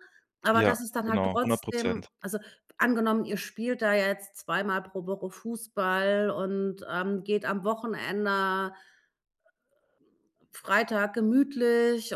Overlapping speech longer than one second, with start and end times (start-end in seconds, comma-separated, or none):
0.5-2.1